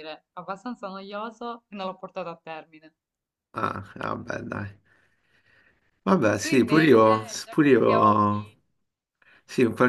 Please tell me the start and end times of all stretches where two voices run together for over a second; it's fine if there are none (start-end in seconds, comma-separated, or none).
6.4-8.5